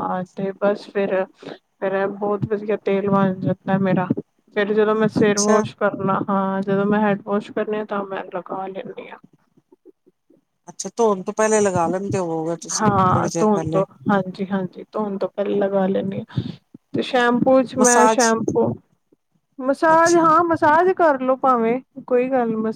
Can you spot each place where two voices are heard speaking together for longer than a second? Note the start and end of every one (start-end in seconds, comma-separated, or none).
none